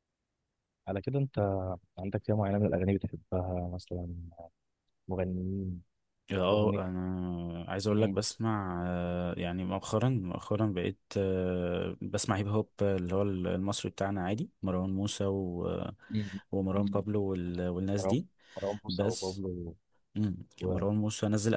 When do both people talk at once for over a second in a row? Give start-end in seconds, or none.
none